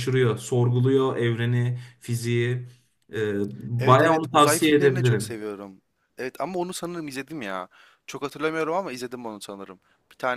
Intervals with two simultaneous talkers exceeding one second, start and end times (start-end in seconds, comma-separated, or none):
3.8-5.4